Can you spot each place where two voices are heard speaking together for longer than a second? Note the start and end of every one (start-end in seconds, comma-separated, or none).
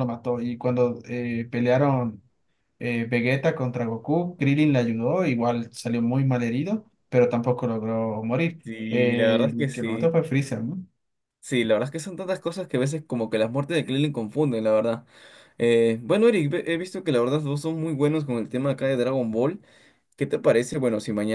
8.6-10.2